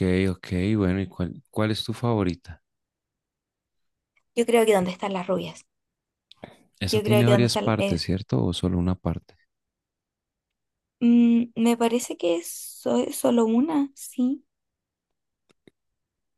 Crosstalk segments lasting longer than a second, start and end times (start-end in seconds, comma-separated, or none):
6.8-8.1